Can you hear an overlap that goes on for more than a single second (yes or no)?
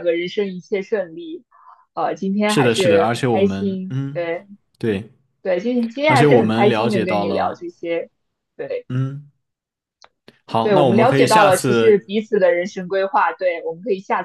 yes